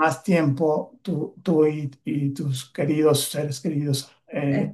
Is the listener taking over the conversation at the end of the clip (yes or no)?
no